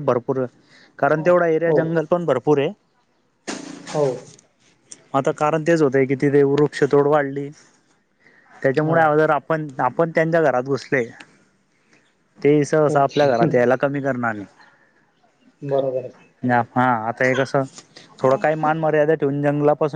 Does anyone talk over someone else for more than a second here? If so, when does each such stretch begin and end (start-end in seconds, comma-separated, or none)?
none